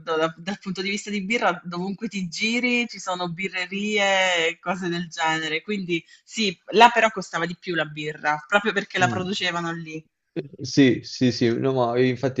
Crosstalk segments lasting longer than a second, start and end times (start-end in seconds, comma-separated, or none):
none